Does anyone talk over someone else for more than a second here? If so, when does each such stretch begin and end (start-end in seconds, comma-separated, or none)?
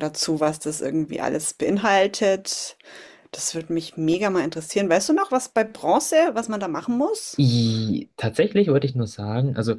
none